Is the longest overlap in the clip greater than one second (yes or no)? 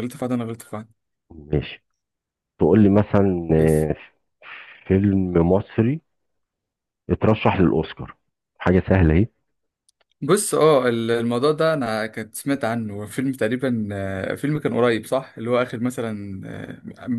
no